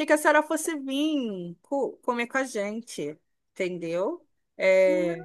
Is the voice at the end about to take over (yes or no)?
yes